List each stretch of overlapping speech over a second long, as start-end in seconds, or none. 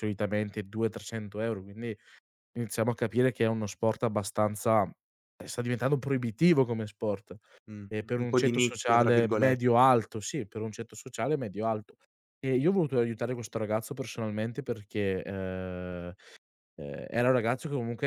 7.9-9.6